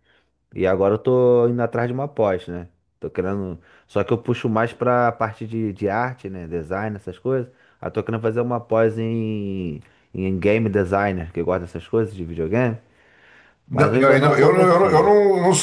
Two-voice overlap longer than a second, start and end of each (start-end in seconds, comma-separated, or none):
13.7-15.1